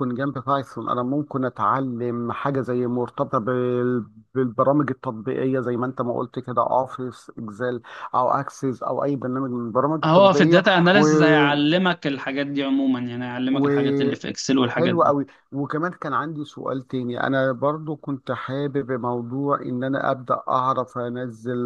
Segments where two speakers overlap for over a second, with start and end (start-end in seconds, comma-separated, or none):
none